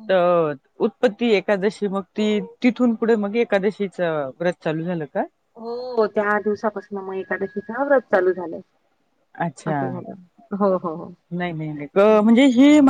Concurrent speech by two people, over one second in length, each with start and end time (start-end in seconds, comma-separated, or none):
none